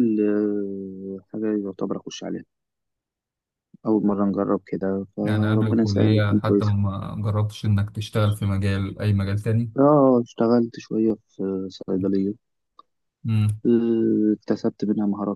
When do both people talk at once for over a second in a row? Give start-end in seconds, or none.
5.2-6.7